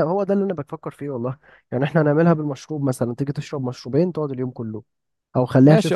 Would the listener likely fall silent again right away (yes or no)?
no